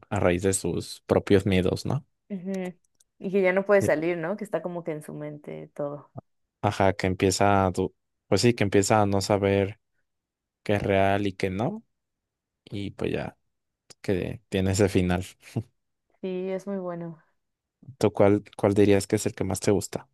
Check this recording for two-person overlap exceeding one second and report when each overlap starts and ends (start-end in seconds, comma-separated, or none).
none